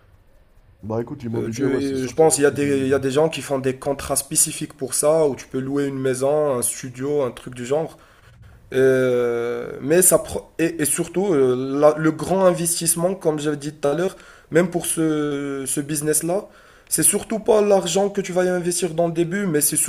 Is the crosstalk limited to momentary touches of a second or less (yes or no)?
no